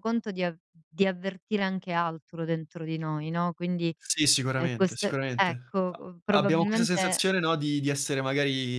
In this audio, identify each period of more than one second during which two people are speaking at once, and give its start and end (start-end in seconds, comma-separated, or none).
4.5-7.2